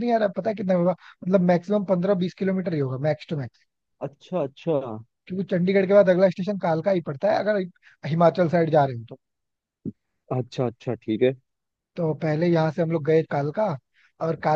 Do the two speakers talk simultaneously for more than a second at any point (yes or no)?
no